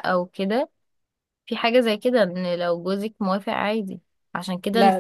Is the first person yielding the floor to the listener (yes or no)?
no